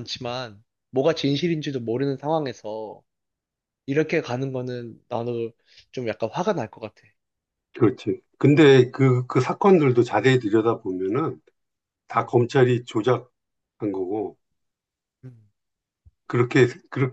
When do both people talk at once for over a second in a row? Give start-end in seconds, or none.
none